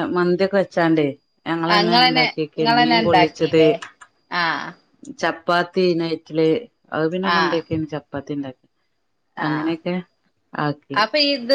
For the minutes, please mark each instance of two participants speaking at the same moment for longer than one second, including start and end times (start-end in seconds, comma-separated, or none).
1.7-3.6